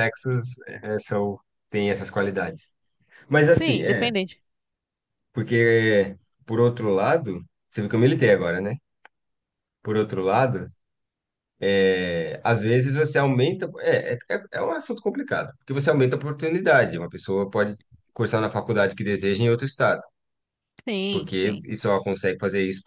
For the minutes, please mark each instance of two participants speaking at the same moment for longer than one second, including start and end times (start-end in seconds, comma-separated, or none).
none